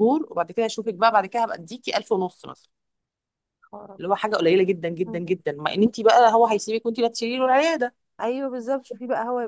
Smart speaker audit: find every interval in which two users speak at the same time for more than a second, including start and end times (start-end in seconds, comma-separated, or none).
none